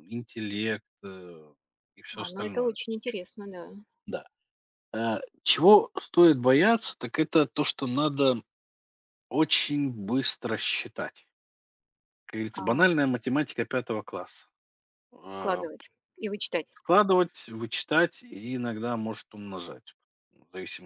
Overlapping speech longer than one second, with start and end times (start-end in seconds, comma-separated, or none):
none